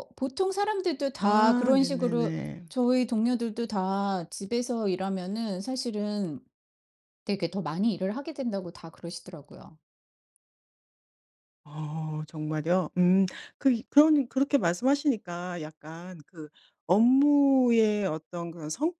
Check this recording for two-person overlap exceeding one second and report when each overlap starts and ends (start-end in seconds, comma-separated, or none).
1.2-2.7